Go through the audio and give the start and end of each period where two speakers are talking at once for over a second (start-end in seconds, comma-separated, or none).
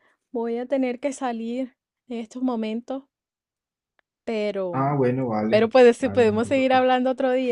5.5-6.9